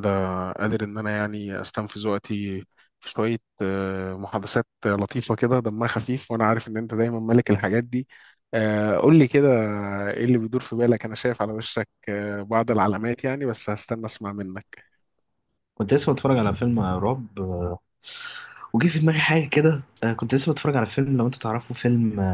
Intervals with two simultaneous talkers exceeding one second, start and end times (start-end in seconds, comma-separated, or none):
none